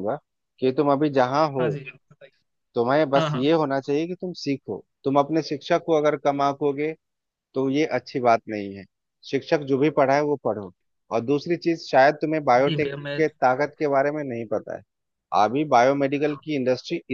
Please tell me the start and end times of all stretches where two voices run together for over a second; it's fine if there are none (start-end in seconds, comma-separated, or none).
none